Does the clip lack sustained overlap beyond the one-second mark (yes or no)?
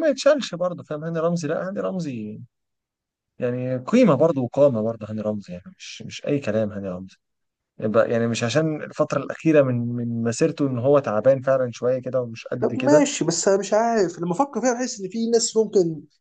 yes